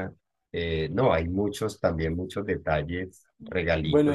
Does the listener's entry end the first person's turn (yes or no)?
yes